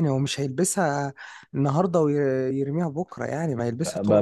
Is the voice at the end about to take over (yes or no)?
yes